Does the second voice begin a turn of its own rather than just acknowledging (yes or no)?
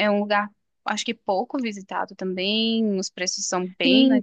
yes